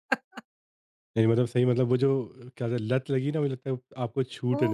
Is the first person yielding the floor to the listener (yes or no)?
yes